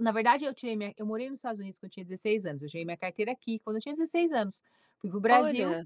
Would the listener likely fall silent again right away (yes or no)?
yes